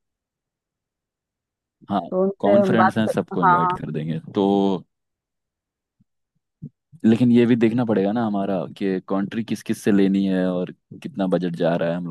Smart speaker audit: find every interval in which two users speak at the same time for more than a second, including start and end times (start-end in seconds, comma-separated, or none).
2.4-3.8